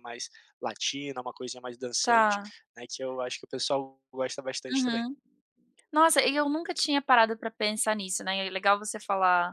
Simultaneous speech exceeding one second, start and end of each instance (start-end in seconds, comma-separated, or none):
none